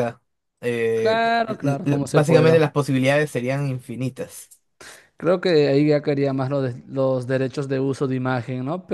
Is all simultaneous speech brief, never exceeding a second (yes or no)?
no